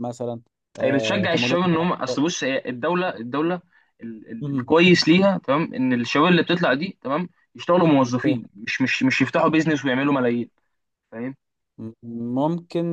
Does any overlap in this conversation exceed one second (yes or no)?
yes